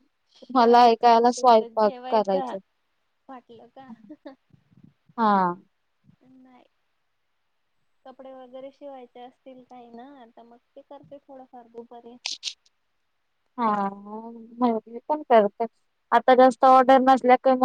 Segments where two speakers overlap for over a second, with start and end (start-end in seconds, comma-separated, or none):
0.5-2.6